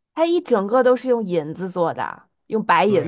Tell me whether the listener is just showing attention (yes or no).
no